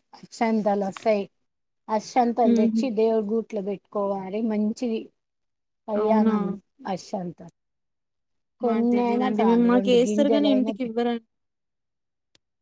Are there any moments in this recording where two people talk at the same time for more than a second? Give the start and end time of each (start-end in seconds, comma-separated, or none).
8.7-10.7